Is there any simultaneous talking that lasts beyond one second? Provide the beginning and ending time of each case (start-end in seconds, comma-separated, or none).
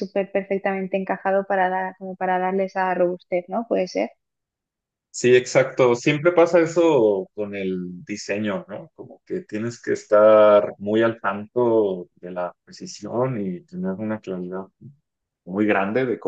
none